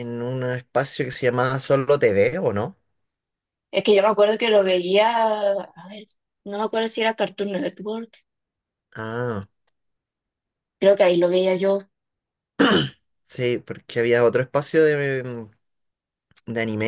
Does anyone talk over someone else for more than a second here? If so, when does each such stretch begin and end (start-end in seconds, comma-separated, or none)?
none